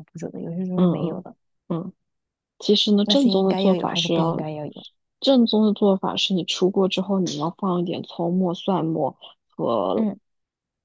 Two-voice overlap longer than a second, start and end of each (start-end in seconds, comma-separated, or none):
3.0-4.5